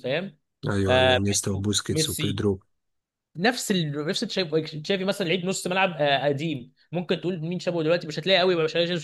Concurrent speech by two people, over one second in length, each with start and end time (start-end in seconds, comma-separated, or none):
0.9-2.4